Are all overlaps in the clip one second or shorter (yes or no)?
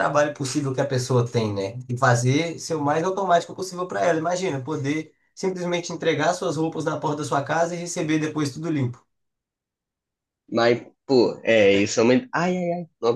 yes